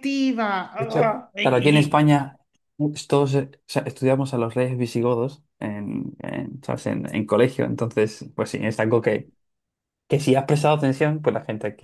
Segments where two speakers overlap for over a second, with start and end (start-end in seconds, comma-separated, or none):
0.8-2.1